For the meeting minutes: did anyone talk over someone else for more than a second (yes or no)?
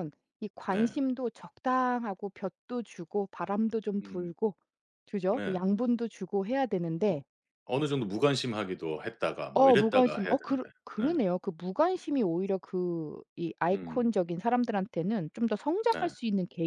yes